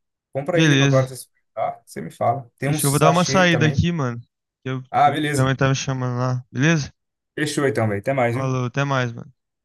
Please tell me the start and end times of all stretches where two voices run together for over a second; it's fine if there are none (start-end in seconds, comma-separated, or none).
2.7-3.9